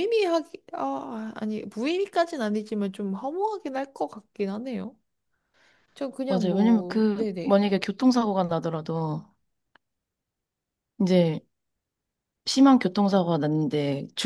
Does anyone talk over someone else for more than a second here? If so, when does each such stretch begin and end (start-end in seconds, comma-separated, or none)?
6.3-7.6